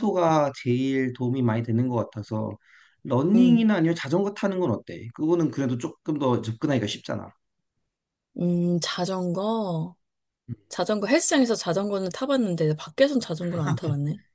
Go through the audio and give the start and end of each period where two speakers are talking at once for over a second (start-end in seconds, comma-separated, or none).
none